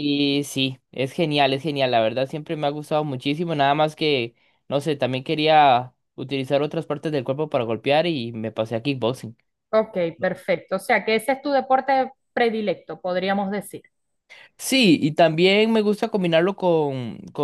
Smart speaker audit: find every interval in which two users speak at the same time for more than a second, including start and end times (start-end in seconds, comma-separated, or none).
none